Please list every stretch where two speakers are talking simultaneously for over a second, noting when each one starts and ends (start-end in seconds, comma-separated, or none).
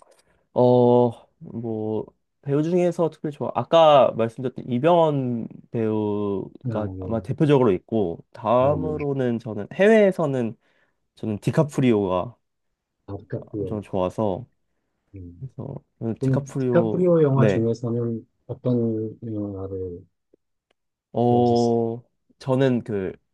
16.2-17.7